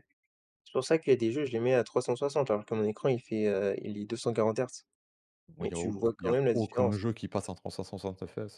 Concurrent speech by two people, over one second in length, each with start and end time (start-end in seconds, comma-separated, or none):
5.6-7.0